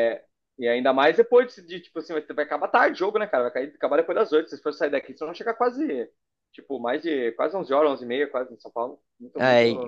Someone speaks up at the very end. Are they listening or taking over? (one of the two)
taking over